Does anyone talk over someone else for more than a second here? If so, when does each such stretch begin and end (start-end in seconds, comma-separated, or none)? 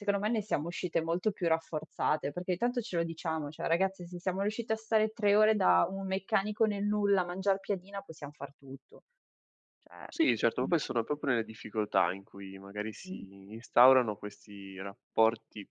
none